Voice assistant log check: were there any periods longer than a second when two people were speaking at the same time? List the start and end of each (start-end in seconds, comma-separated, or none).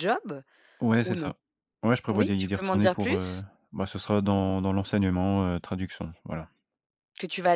2.1-3.4